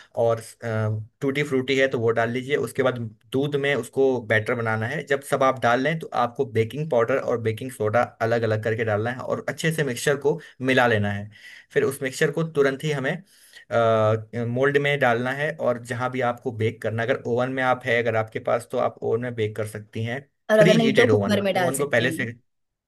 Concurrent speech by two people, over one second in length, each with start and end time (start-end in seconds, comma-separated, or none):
20.6-22.3